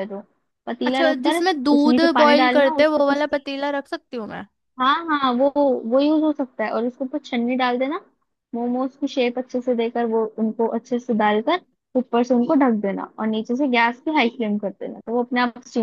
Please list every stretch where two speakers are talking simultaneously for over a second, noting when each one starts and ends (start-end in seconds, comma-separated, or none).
0.8-3.1